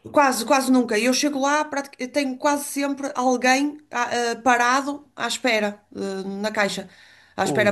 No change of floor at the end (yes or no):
no